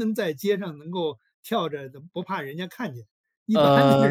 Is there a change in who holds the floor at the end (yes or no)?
yes